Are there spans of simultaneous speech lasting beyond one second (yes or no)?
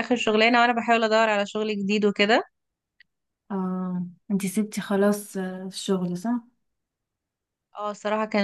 no